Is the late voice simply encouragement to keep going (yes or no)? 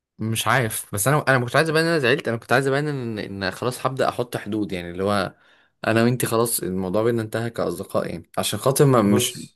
yes